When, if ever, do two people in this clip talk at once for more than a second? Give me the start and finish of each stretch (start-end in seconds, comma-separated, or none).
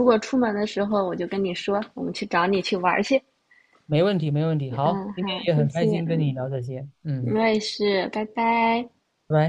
4.8-6.3